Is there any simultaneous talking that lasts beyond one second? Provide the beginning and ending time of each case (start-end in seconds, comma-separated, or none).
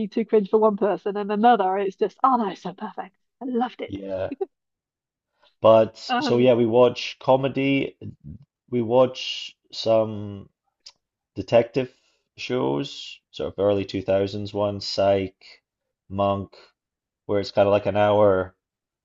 none